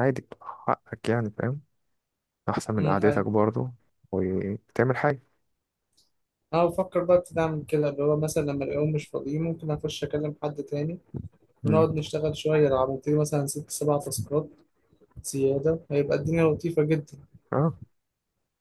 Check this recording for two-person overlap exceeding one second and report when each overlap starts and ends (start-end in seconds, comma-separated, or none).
none